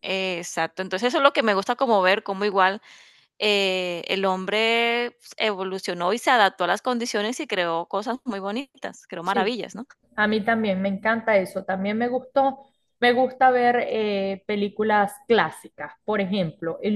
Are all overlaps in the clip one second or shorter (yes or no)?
yes